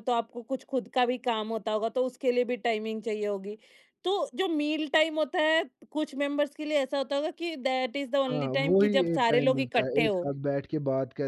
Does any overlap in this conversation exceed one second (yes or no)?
yes